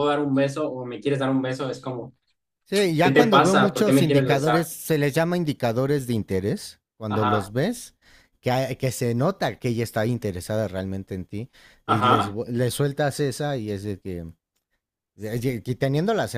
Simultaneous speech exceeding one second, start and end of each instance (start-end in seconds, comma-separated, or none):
3.0-4.7